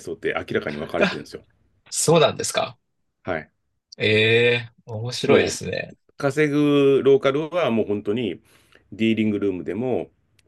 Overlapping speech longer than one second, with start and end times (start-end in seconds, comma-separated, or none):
none